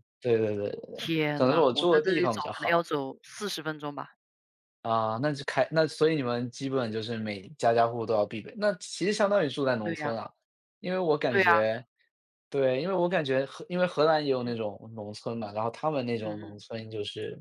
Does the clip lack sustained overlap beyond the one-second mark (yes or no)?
no